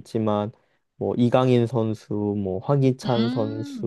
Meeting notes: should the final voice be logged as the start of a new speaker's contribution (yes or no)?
yes